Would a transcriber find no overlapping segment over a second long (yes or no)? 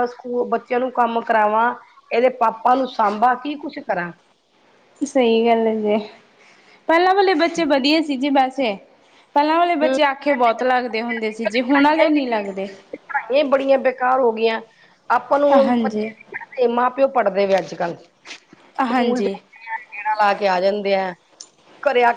yes